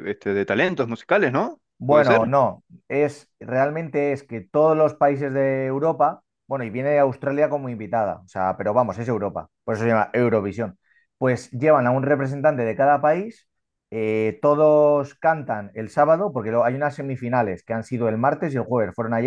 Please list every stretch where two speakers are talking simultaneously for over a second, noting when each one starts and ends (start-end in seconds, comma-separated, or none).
none